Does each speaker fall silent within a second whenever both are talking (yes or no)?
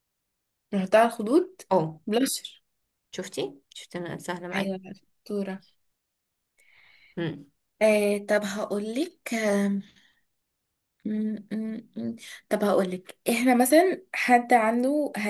yes